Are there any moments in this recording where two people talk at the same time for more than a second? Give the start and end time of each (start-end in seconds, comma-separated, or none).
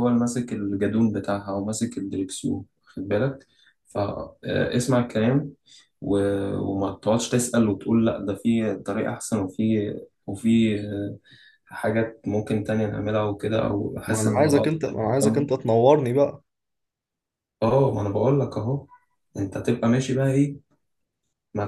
14.1-15.5